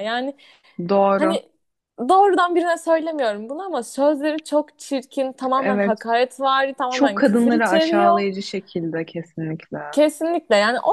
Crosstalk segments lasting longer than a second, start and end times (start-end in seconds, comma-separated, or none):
6.9-8.2